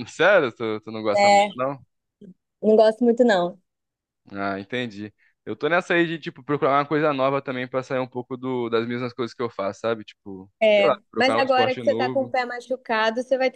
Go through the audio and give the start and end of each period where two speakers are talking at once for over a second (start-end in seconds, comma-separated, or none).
10.6-12.3